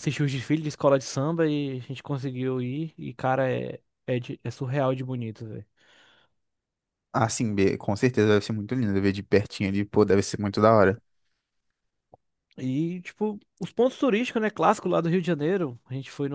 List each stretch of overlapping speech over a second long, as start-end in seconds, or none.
none